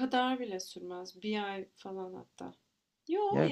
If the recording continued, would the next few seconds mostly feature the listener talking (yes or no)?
no